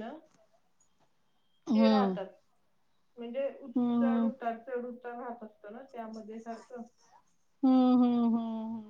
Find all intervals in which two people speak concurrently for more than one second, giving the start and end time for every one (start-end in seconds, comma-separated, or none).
none